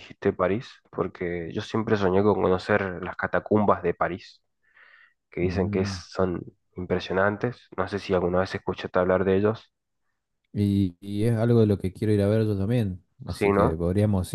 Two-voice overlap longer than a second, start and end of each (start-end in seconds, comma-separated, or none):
none